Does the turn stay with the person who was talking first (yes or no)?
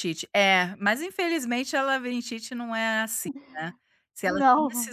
yes